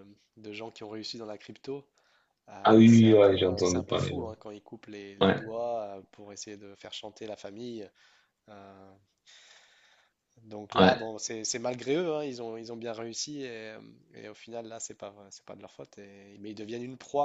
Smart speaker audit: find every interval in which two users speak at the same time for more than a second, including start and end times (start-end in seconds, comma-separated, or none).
2.6-4.2